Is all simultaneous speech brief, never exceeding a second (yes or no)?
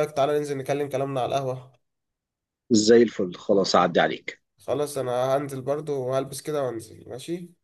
yes